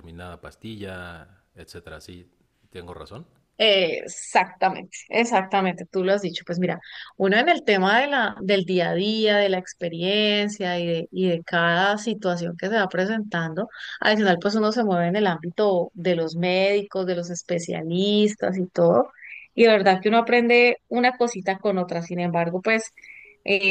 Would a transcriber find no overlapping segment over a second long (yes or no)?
yes